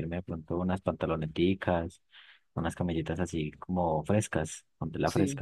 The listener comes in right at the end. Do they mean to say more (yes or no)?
yes